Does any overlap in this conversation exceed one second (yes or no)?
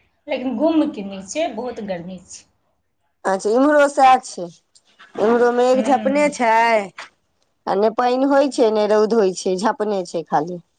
no